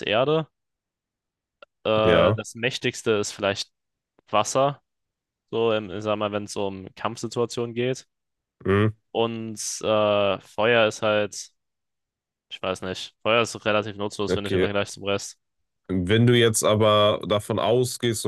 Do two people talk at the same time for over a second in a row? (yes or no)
no